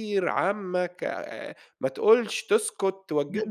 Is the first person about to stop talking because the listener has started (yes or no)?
yes